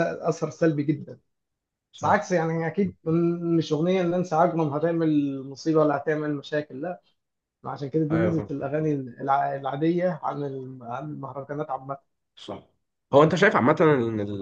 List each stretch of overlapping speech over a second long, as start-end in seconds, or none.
none